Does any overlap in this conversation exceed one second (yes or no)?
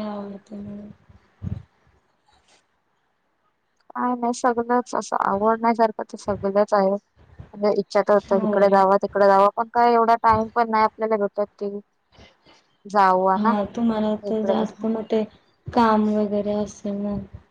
no